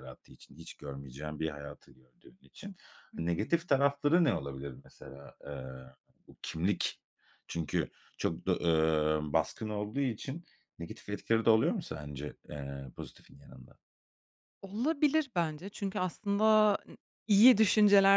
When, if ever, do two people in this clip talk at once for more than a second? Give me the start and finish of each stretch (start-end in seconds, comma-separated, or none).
none